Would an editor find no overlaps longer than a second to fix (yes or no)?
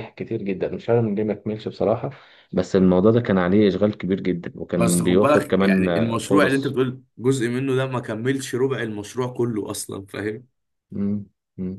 no